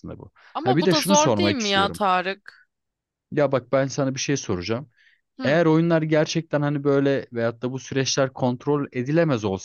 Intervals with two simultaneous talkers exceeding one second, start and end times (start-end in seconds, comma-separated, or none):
0.5-2.0